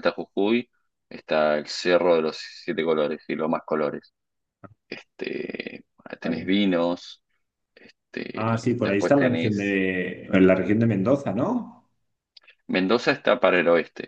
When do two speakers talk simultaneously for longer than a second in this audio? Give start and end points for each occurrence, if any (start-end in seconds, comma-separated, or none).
8.3-9.8